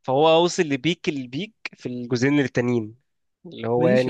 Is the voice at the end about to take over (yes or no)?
yes